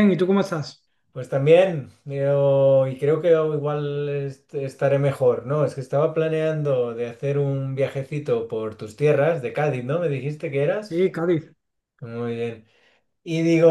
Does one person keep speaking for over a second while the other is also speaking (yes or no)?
no